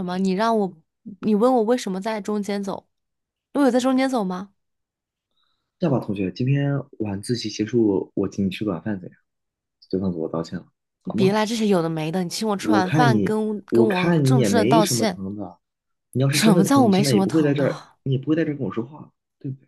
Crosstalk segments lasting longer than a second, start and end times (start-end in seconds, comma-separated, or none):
12.6-15.2, 16.3-18.0